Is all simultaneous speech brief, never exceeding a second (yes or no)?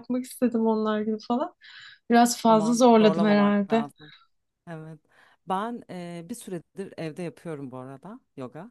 no